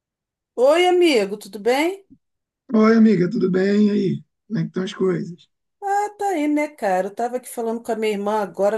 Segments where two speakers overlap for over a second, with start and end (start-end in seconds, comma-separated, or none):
none